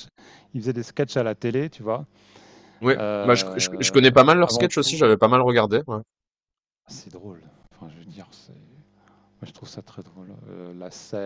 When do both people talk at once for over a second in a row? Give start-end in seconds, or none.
2.9-4.9